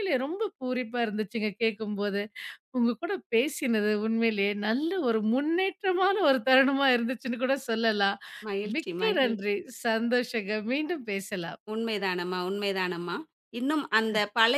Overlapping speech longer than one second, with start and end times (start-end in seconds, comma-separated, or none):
none